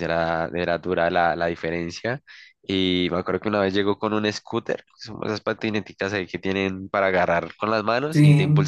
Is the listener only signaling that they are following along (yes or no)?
yes